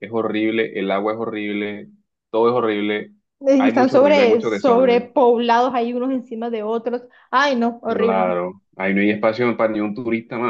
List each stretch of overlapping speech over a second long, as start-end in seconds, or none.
3.6-5.1